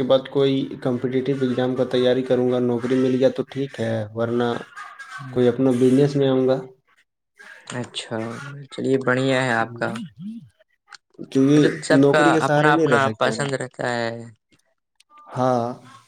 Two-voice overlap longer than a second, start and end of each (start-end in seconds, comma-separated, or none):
11.5-13.5